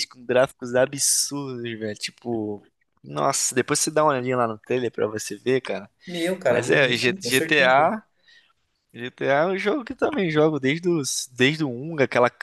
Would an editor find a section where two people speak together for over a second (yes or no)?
yes